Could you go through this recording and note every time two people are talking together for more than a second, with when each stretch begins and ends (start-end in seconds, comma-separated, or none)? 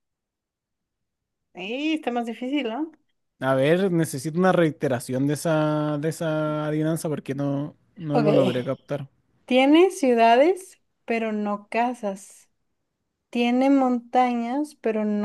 none